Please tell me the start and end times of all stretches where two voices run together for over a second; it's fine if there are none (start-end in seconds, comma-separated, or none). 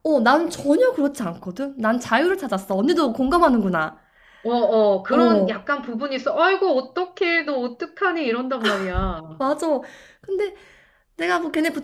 none